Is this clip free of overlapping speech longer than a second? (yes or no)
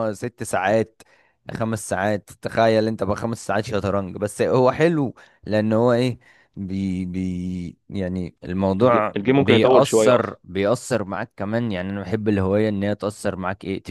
no